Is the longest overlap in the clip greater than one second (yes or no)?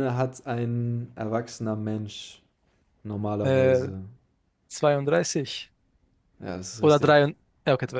no